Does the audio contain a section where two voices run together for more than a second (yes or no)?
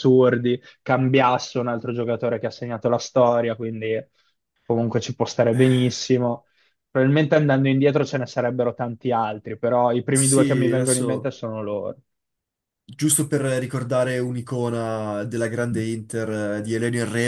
yes